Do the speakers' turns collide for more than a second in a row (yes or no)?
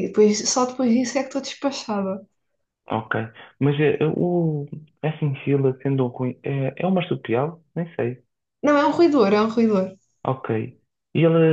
no